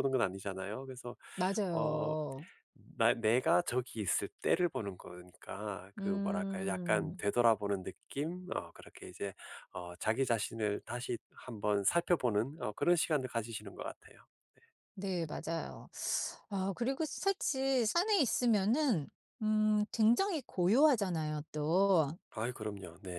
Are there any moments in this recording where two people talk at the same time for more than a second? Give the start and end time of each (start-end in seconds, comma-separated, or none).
6.0-7.2